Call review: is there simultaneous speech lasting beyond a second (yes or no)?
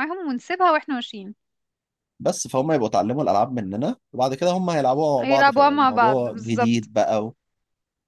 yes